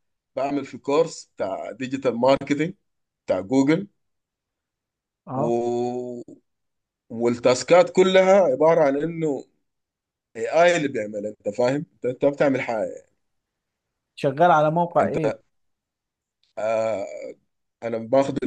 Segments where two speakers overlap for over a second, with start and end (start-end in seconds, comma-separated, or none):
none